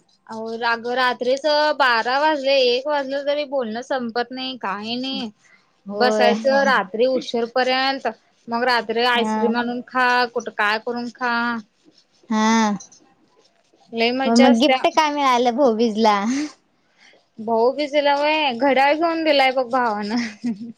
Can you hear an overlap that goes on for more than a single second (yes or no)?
no